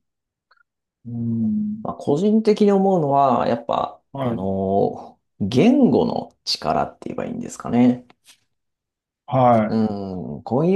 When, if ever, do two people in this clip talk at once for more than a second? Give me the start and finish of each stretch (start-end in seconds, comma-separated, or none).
none